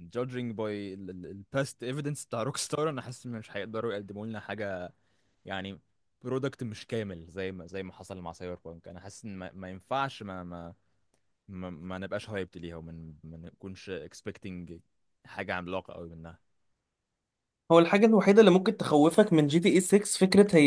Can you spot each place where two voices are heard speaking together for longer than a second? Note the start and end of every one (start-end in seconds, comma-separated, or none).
none